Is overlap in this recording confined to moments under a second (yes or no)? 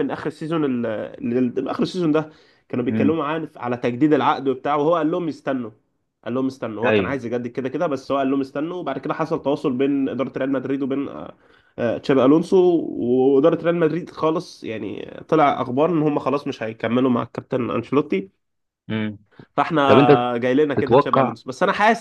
yes